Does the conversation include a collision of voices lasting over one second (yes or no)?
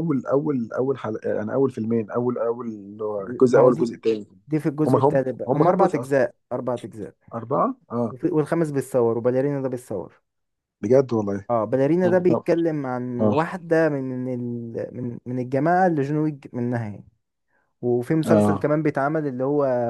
yes